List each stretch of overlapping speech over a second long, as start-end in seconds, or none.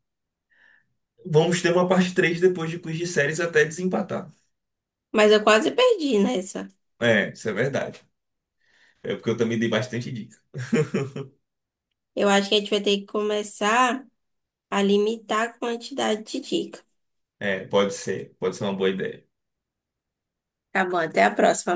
none